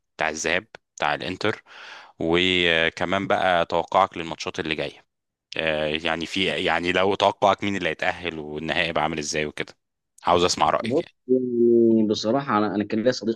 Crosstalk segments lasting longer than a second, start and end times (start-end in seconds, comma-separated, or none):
none